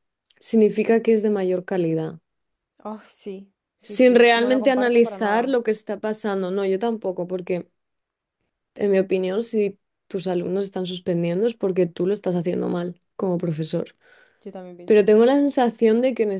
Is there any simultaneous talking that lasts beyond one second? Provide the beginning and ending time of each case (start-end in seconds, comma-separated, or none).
3.8-5.6